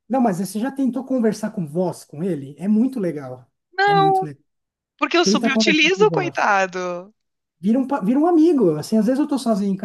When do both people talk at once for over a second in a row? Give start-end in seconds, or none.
5.2-6.5